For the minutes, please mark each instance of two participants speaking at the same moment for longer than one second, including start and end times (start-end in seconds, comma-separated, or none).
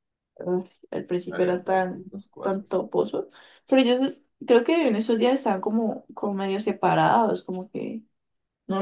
1.3-2.8